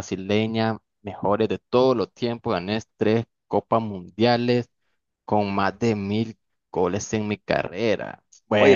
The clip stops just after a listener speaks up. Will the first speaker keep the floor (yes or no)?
no